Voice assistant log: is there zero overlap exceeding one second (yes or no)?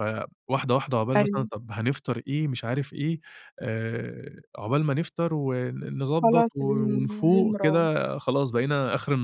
no